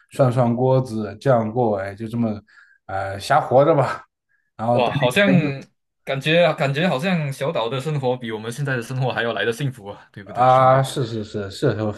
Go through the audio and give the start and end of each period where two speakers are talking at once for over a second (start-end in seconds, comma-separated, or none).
none